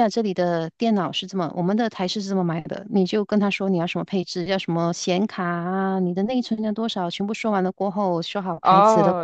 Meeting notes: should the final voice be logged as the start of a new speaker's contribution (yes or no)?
yes